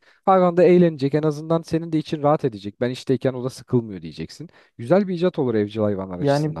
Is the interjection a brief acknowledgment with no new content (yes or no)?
no